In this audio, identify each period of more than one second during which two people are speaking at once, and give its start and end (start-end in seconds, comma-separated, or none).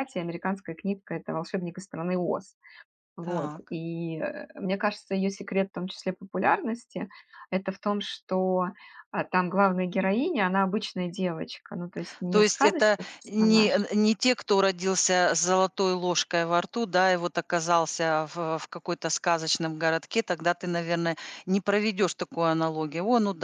12.3-13.7